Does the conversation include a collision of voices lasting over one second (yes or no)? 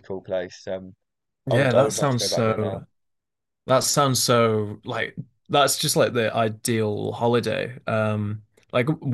yes